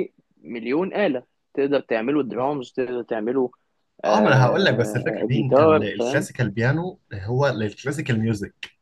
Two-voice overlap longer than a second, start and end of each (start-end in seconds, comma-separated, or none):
4.1-6.3